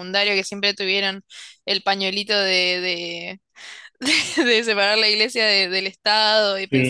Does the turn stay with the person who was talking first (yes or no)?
yes